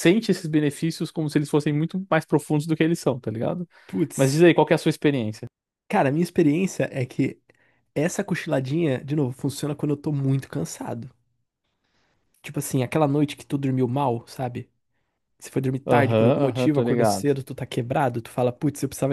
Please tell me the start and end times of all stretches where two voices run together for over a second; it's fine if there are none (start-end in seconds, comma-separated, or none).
15.8-17.3